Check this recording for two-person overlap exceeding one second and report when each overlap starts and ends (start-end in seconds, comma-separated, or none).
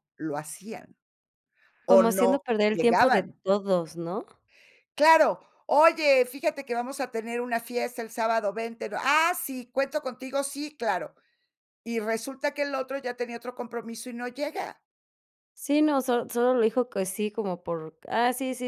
1.9-3.4